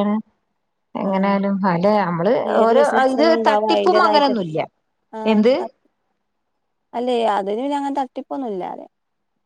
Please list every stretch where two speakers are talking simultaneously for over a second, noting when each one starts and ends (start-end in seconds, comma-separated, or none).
2.6-4.3